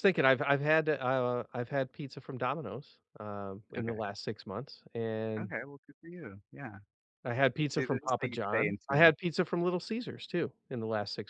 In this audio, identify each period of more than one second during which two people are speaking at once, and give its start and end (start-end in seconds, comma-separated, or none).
7.7-9.1